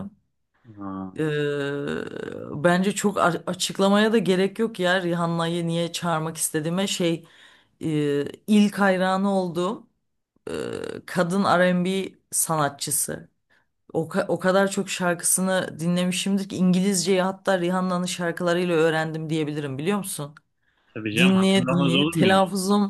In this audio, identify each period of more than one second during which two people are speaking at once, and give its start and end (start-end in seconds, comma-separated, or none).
21.1-22.4